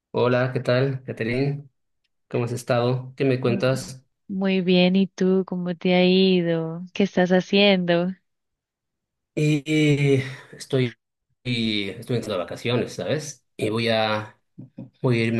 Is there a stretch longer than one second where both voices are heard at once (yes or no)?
no